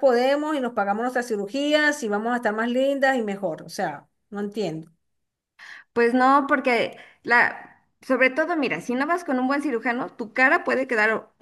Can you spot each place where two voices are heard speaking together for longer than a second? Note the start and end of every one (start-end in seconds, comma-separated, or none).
none